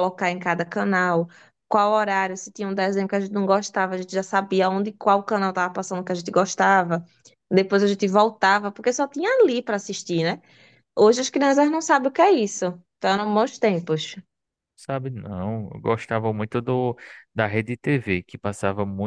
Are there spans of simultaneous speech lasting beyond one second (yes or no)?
no